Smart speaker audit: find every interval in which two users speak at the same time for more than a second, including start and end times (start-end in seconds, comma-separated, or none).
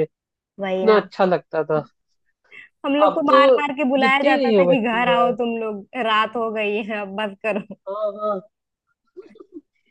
4.0-5.3